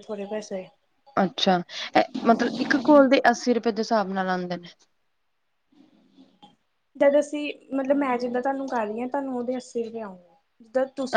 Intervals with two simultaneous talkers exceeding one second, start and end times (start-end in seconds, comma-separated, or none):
none